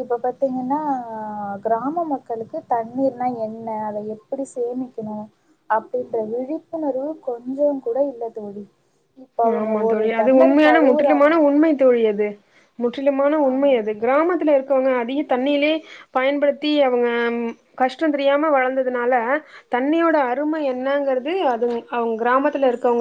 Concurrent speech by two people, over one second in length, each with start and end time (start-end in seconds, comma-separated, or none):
9.6-11.3